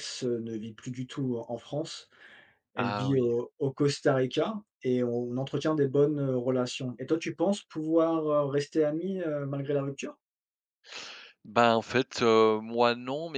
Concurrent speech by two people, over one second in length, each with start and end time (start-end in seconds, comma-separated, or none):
none